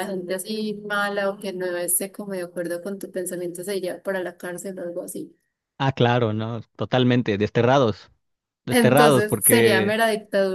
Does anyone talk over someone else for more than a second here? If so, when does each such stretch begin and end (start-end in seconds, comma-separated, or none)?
8.7-10.0